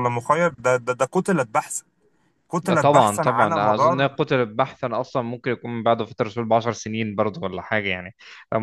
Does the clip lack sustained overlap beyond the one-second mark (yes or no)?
no